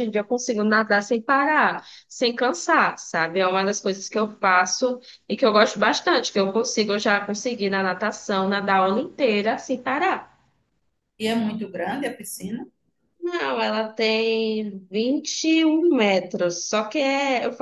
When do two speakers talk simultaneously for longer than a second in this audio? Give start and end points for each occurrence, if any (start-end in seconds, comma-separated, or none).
none